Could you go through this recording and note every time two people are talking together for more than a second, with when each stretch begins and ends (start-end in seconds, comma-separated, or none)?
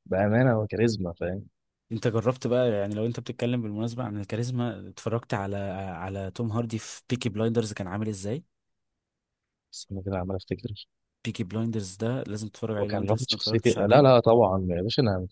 12.8-14.1